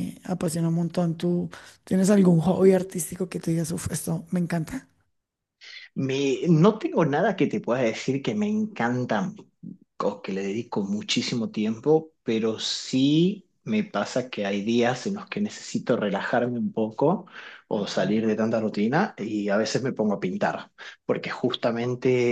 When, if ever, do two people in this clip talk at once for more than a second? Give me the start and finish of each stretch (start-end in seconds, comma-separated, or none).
none